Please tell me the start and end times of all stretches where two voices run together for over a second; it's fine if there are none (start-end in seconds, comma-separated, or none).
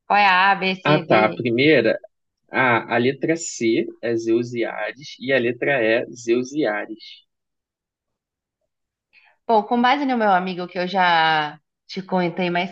none